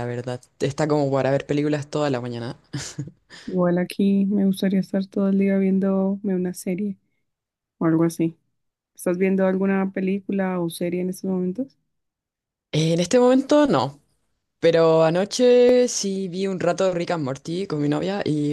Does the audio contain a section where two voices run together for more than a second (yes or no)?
no